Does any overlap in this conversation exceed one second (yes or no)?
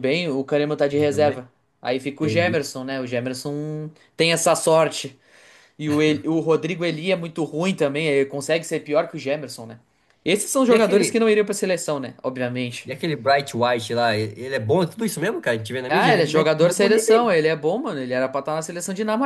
yes